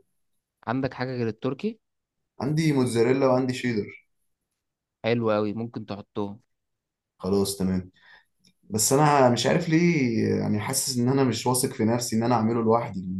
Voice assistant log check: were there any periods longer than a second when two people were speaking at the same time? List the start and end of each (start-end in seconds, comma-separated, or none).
none